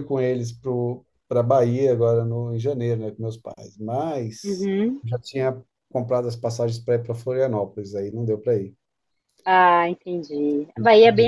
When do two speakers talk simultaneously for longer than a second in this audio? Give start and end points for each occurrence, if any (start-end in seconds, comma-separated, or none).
none